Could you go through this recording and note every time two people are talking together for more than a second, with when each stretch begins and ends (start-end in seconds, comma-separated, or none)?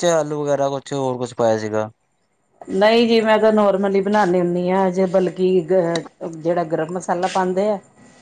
none